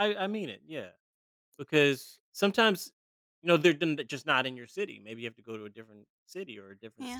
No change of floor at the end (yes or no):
no